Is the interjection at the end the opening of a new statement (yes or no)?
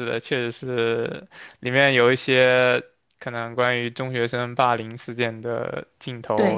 yes